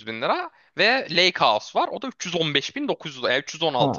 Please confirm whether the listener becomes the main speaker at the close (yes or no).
yes